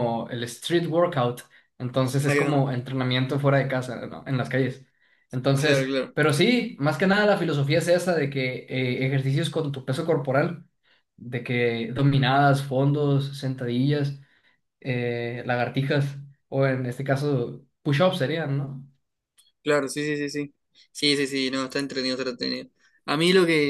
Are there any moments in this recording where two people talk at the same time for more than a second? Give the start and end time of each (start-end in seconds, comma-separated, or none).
none